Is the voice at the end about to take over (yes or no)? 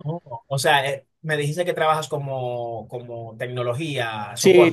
yes